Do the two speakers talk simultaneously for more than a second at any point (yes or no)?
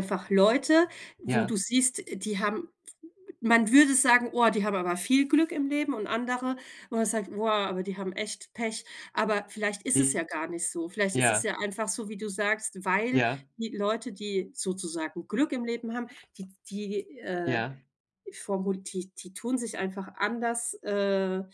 no